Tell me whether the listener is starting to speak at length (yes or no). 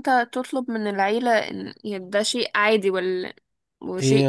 yes